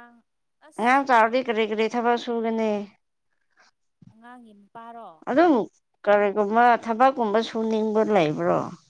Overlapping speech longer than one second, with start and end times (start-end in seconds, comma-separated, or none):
none